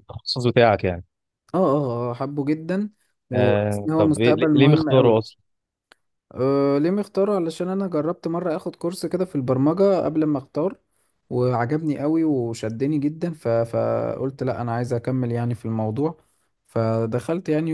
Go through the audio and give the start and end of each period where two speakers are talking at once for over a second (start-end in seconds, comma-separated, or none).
3.3-5.2